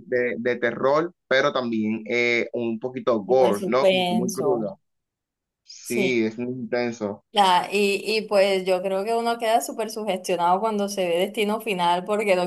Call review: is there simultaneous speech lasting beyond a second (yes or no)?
yes